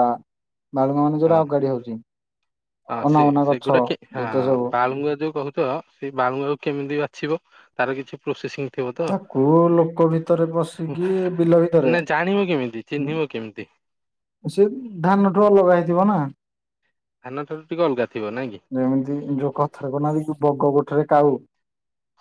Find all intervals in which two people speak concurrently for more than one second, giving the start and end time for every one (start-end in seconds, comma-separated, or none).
none